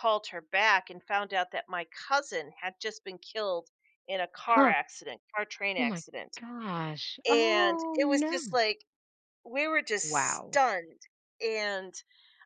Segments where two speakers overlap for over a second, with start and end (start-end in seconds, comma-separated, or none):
7.3-8.6